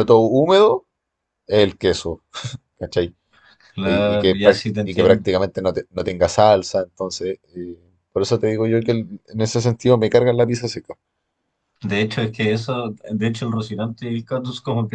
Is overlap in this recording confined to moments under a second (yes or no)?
no